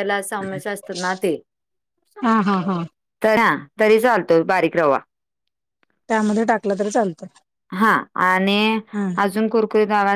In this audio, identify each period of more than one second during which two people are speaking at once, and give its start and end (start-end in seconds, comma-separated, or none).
none